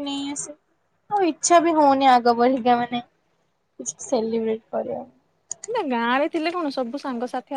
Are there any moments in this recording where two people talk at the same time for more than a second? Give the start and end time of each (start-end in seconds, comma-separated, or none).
none